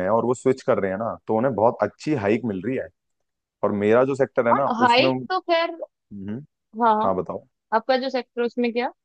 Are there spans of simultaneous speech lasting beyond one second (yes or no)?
no